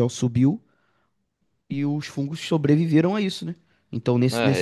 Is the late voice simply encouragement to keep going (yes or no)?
yes